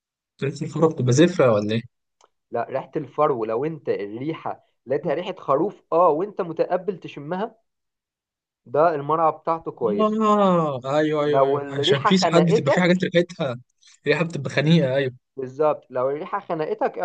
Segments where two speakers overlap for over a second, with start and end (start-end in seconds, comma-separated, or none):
11.2-13.1